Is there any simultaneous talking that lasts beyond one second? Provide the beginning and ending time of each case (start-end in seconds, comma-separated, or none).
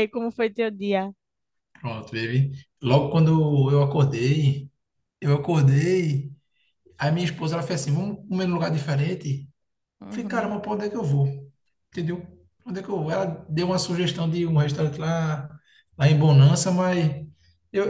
none